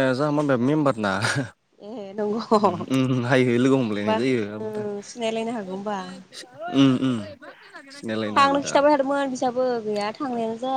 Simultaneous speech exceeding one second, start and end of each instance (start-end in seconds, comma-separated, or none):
none